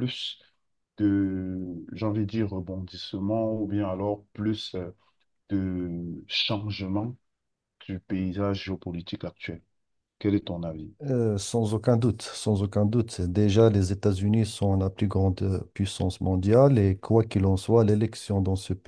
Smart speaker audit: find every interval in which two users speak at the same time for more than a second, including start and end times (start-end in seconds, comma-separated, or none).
none